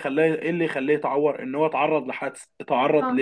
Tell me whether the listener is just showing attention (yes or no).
yes